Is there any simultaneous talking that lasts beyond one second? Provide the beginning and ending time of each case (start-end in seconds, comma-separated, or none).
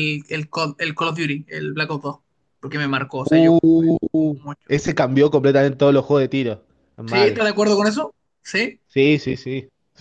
3.2-4.7